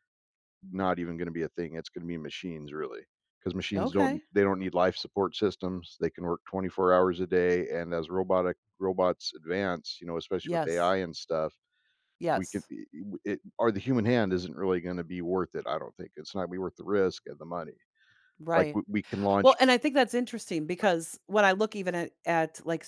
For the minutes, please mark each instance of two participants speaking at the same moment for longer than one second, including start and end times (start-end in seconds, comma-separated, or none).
none